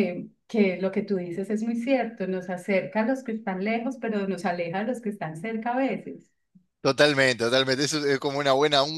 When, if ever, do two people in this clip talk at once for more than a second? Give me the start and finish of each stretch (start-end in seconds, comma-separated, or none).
none